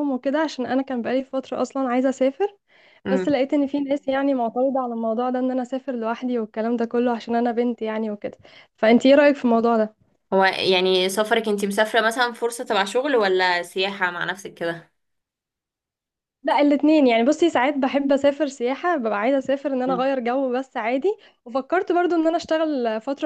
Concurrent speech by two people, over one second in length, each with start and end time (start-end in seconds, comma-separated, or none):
none